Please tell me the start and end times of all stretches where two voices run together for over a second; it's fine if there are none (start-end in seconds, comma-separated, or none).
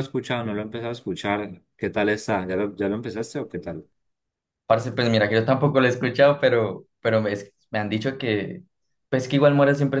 none